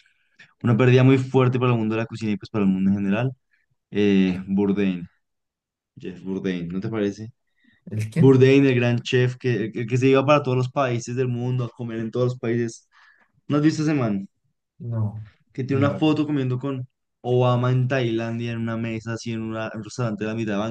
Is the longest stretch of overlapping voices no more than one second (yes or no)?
yes